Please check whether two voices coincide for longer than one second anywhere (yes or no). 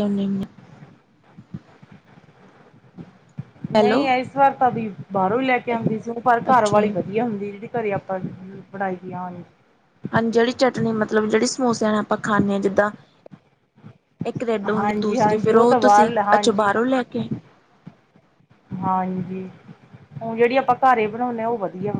yes